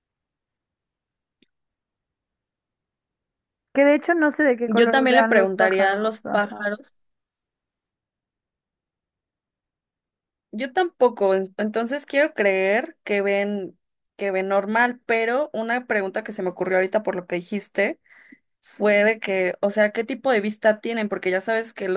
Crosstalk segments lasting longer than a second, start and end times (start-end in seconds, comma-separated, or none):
4.7-6.7